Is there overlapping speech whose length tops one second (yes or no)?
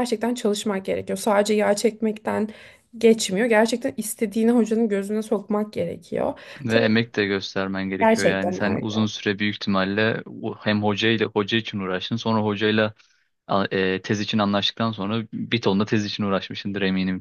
no